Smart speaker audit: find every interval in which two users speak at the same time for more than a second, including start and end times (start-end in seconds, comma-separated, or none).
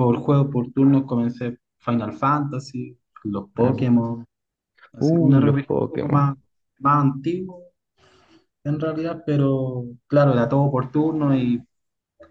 5.0-6.3